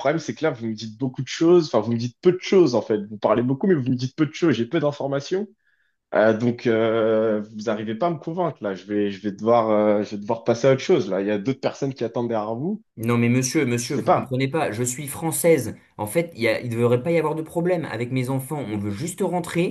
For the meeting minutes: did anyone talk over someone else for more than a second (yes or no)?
no